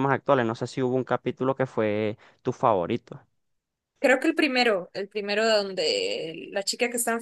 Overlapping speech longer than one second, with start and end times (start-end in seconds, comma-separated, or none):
none